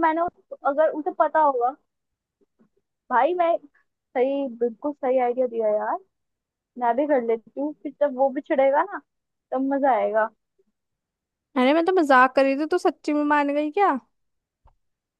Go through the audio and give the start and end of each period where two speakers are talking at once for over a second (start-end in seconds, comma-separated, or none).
none